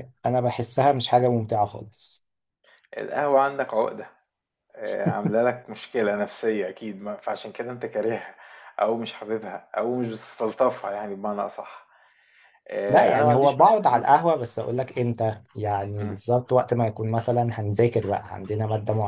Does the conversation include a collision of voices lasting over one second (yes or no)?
yes